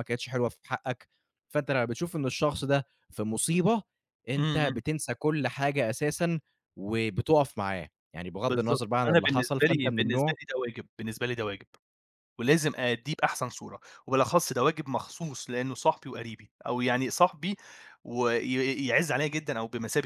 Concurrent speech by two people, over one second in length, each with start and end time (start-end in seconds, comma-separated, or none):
8.5-10.4